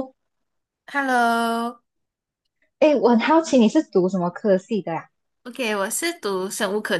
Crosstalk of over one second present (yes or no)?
no